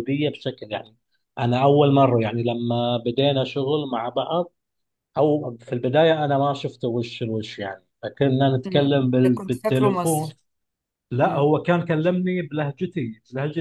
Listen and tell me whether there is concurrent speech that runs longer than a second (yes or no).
yes